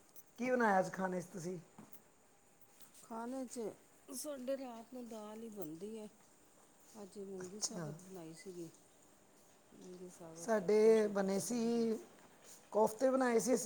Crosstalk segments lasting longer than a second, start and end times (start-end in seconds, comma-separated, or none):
10.4-11.9